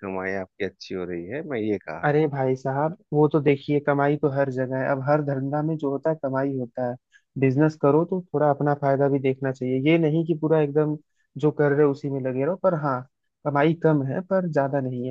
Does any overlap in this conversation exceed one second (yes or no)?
no